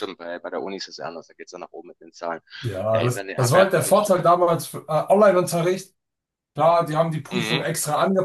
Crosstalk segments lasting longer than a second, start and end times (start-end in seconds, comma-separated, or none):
2.9-4.3